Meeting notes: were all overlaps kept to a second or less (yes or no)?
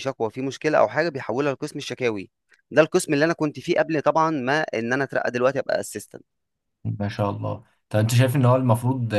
yes